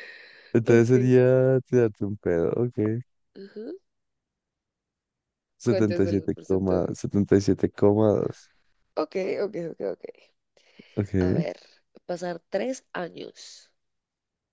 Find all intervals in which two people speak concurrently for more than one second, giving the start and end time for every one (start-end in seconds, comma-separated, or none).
5.6-6.9